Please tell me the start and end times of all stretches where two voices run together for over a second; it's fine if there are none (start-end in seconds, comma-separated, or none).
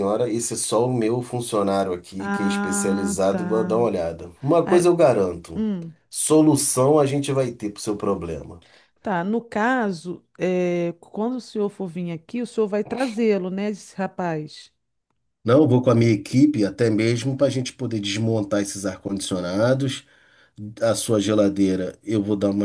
2.2-3.4